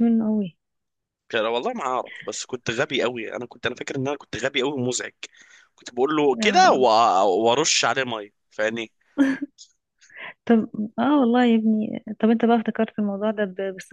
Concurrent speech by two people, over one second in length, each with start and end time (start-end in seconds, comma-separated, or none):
none